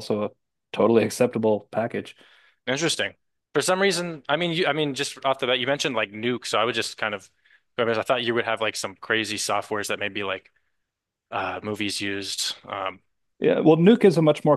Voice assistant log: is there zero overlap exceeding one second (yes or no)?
yes